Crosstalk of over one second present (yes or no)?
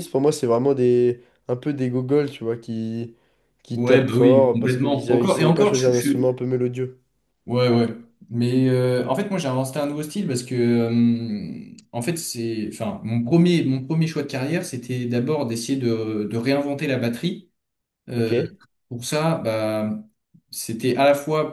yes